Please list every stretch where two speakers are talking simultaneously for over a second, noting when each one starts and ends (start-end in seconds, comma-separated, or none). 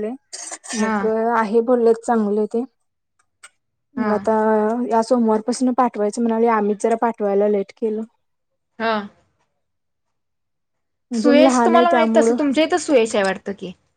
11.2-12.4